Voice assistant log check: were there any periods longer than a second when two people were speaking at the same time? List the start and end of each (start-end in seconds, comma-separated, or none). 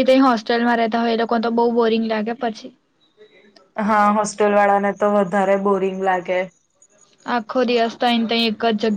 none